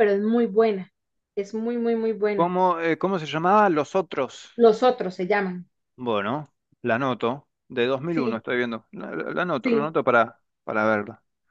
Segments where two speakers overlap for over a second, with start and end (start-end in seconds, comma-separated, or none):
none